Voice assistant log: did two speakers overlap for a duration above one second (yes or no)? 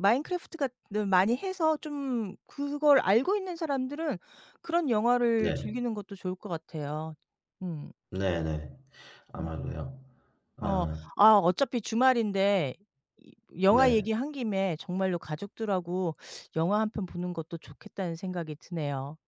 no